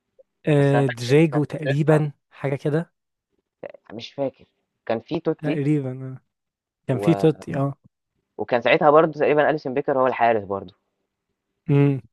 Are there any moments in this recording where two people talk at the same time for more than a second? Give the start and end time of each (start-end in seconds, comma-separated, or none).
0.5-2.1